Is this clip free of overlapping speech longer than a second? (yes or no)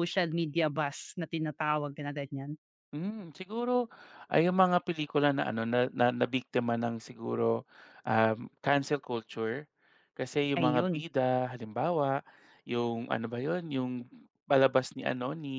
yes